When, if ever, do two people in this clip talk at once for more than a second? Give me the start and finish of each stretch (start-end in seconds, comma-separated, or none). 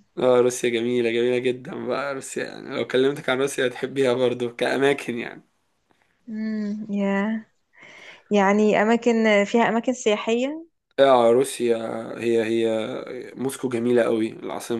none